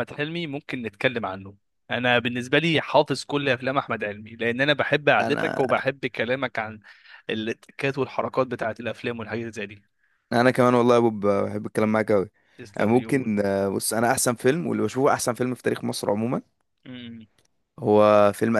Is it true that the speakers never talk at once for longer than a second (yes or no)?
yes